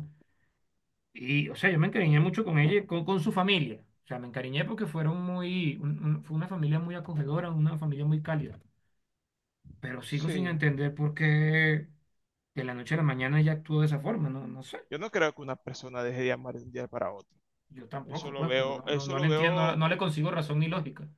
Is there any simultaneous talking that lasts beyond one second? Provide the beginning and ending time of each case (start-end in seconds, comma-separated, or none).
18.0-19.8